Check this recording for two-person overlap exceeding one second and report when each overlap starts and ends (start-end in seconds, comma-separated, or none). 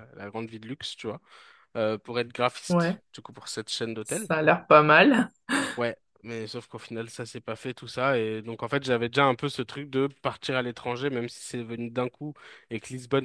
none